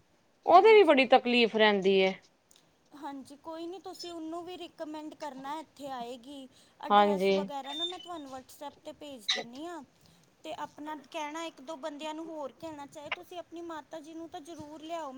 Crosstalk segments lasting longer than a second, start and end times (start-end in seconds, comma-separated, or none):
none